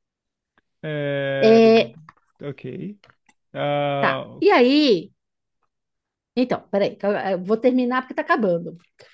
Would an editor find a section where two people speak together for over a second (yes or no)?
no